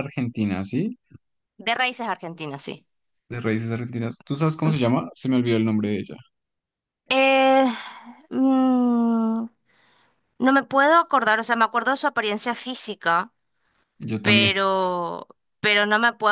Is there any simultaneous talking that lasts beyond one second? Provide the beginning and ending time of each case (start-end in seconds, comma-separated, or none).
none